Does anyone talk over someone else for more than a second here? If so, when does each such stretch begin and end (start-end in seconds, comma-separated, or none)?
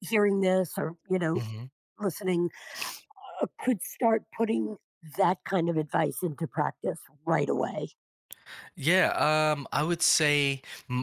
none